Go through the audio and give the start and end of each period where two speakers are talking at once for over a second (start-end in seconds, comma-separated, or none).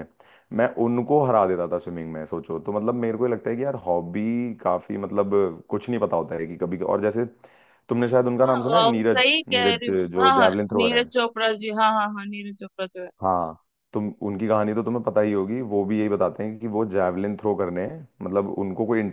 8.4-11.1